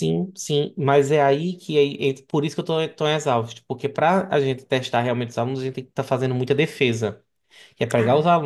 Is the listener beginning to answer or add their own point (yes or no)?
no